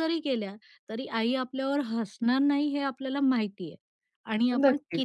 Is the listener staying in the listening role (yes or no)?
yes